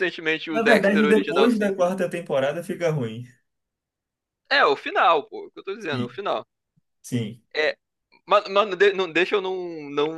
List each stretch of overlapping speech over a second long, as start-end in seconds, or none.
0.5-1.8